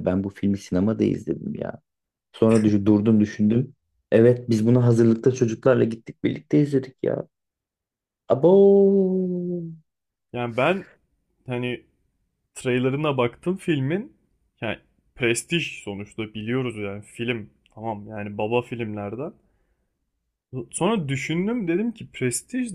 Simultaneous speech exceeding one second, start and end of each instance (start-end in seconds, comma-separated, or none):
none